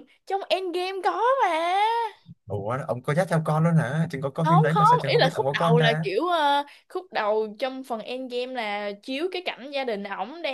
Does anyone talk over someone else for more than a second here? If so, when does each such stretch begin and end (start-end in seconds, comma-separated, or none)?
4.4-6.1